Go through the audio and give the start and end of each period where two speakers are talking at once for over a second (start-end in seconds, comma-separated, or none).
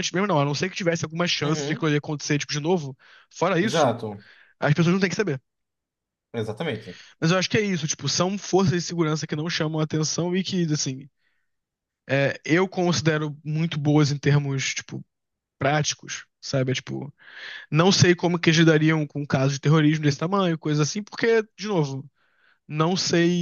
none